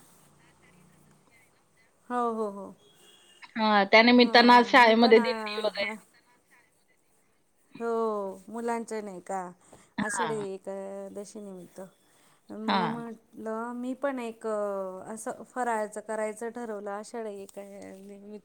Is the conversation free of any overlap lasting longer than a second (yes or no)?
no